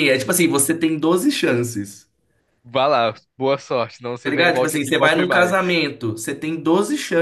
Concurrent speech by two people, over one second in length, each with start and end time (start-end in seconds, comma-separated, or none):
4.2-5.8